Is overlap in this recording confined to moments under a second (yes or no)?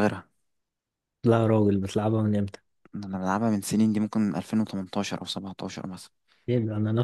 yes